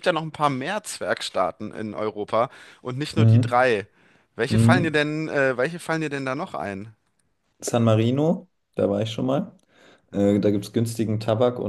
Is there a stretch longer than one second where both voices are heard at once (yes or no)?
no